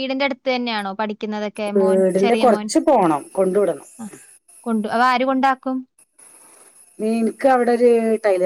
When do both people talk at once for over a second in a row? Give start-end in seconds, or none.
none